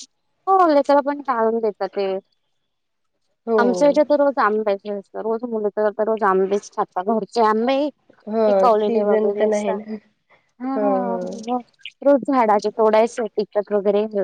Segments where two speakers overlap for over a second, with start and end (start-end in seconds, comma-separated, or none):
8.5-9.7